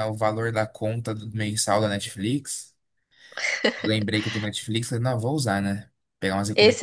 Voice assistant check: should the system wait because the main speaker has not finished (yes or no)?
no